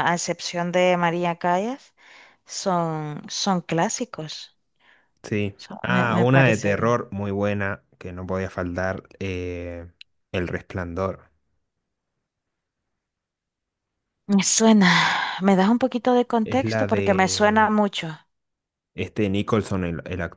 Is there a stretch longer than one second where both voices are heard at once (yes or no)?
yes